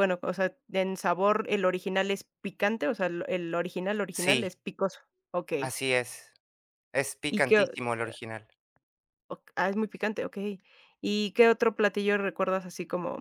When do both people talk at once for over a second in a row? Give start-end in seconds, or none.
none